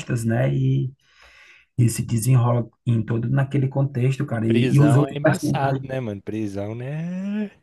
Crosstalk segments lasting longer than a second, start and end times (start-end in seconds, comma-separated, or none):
4.3-5.8